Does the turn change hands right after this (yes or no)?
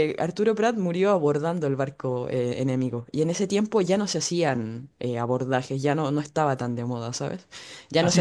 yes